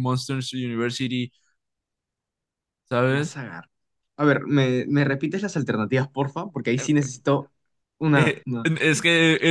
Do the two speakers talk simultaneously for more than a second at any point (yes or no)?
no